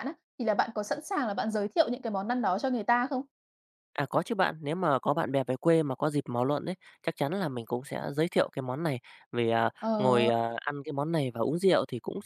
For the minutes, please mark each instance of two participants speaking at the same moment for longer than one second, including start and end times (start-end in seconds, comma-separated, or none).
none